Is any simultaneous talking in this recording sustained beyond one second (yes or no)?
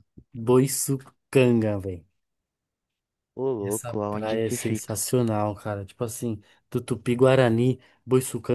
yes